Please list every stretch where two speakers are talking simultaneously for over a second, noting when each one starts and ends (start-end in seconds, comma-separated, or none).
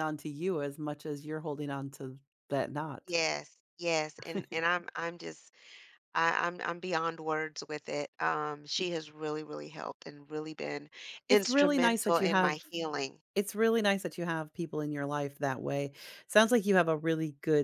11.3-12.6